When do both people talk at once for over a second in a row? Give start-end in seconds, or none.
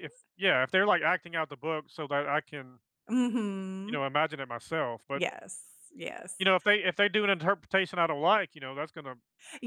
none